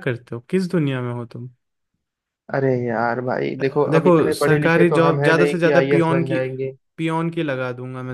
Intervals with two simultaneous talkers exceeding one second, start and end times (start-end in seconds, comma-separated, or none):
3.9-6.4